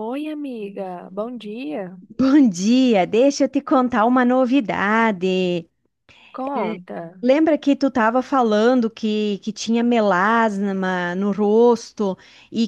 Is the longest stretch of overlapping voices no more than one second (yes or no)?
yes